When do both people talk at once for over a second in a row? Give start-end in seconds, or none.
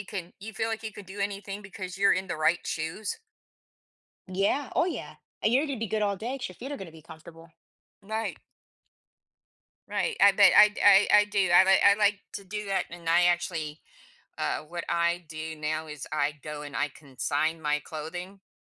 none